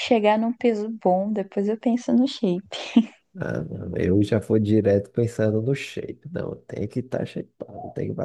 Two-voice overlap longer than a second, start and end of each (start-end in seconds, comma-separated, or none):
none